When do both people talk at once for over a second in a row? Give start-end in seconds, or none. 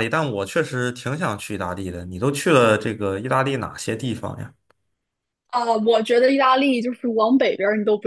none